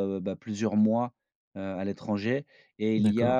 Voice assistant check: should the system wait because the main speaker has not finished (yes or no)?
yes